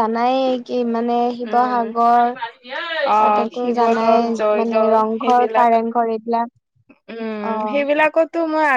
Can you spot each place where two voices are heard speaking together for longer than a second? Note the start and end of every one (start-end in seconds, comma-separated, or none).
3.1-5.7